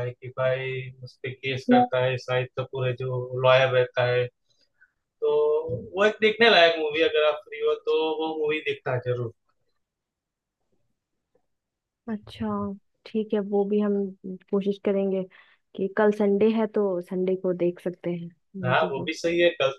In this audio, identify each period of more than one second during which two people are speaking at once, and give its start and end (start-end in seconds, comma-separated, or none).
none